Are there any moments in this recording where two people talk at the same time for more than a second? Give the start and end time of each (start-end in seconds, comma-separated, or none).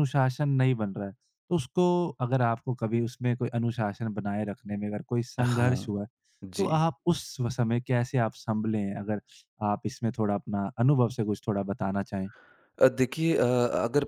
none